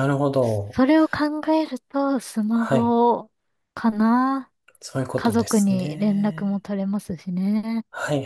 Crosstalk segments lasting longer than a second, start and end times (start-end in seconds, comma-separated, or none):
5.1-6.6